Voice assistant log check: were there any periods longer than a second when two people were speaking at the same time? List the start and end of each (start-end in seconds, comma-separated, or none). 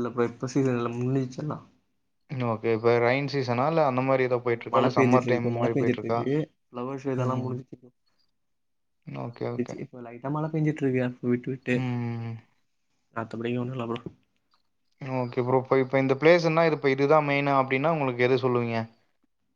4.5-6.2